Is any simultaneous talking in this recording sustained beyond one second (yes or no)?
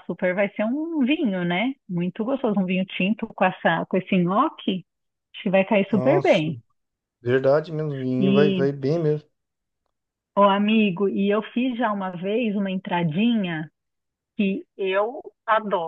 no